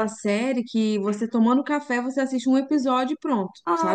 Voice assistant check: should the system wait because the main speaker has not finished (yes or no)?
no